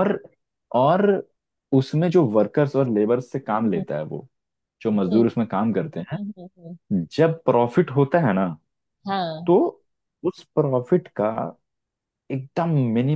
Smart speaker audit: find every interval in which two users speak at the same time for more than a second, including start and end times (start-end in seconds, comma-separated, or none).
none